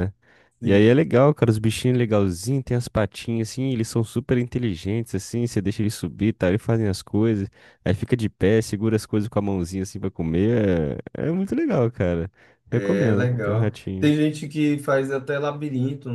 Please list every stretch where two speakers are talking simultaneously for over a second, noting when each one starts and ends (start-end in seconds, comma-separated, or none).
12.7-14.1